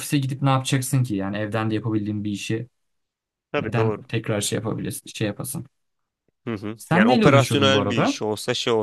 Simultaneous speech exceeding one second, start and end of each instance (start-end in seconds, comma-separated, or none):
6.8-8.2